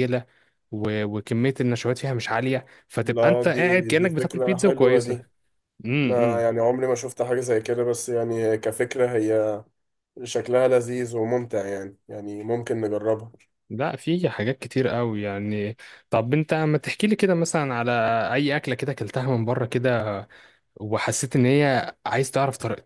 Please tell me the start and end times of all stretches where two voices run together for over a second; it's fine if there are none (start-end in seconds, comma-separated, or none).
3.0-5.2